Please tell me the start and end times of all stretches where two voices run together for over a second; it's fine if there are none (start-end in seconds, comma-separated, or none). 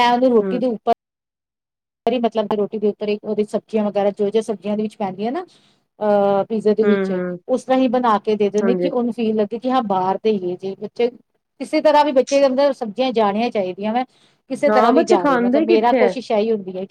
14.7-16.1